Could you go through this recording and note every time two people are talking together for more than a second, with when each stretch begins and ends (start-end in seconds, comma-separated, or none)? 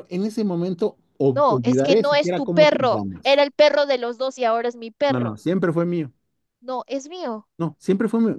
1.3-3.5